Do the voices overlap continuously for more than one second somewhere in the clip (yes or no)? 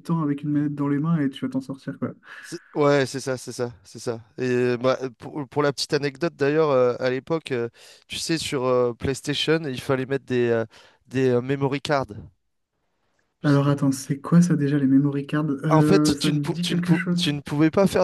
yes